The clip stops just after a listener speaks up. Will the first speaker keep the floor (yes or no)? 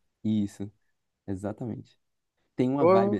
yes